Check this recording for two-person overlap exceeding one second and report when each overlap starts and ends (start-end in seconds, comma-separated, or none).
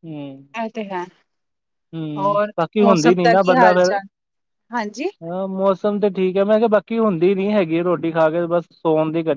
2.2-3.9